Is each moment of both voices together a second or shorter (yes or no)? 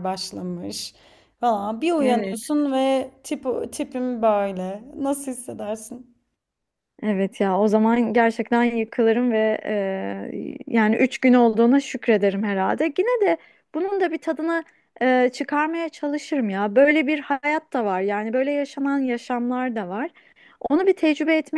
yes